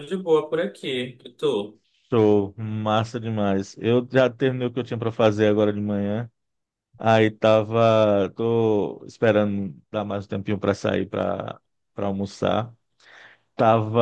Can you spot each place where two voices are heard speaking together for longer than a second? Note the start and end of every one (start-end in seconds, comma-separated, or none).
none